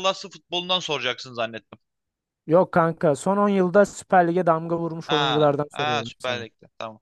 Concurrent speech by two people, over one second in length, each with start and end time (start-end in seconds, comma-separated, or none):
5.1-6.5